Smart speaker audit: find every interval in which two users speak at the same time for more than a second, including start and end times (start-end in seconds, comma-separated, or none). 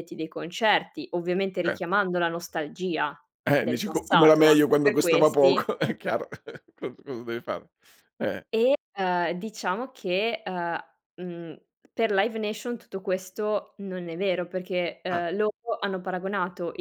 3.6-5.7